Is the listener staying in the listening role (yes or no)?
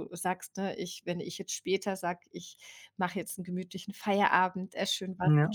yes